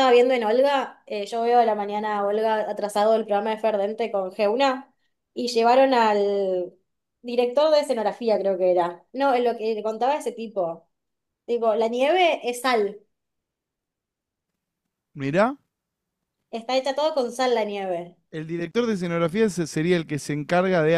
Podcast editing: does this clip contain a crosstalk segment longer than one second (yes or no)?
no